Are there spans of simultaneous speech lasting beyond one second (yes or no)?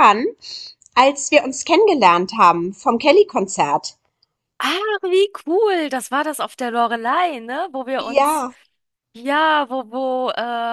no